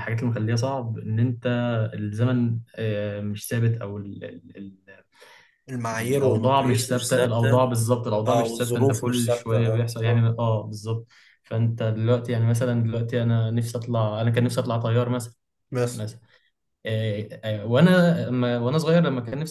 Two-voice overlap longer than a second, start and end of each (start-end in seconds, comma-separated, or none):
5.9-7.6, 8.3-10.3